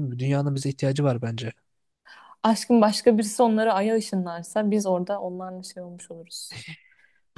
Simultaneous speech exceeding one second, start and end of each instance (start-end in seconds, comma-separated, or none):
none